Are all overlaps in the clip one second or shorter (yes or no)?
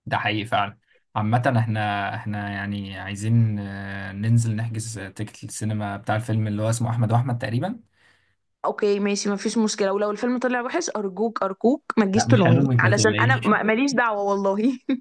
no